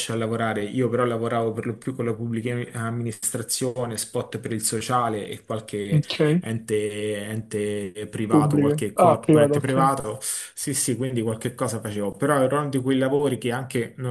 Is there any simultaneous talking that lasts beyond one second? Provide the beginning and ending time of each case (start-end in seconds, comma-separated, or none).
8.3-9.7